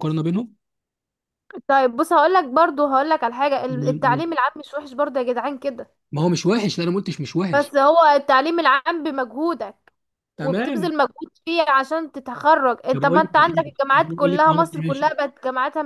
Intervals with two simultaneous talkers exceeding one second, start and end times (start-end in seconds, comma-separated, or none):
12.9-15.1